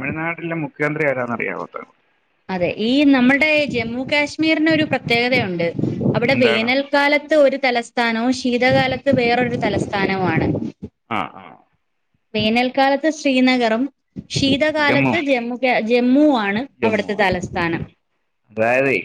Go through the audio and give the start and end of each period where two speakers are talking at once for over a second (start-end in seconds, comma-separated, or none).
none